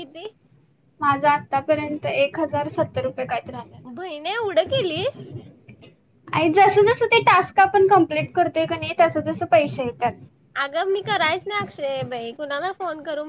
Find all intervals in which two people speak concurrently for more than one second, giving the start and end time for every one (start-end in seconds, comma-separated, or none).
none